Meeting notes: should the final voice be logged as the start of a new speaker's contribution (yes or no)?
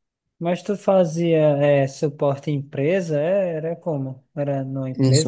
yes